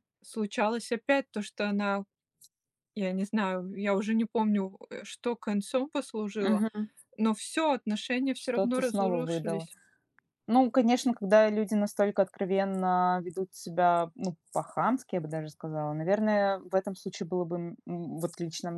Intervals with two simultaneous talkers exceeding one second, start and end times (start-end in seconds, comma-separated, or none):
8.3-9.7